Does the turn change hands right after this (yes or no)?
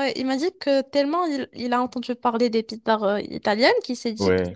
no